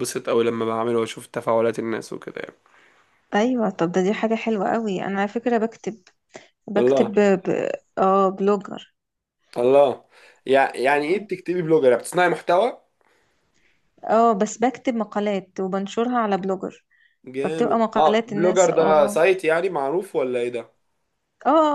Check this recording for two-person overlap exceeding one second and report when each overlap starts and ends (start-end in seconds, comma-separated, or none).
17.4-19.2